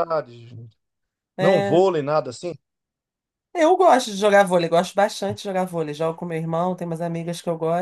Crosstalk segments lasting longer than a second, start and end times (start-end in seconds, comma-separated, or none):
none